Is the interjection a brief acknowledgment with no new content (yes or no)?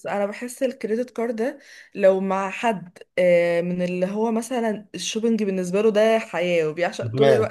yes